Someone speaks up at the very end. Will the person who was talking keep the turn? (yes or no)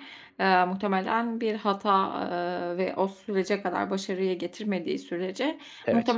yes